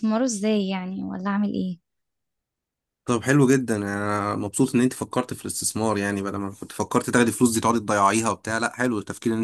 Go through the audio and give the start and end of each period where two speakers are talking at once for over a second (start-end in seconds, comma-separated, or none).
none